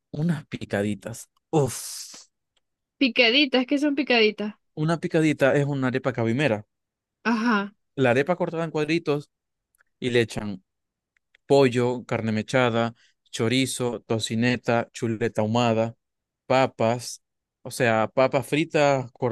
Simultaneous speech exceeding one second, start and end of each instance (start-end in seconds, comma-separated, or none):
none